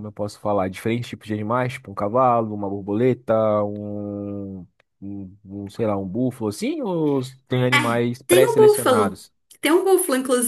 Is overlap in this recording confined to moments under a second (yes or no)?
no